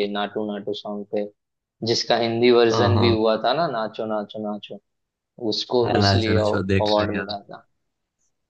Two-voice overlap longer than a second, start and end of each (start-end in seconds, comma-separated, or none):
5.8-7.3